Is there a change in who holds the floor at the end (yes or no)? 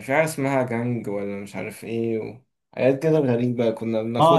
yes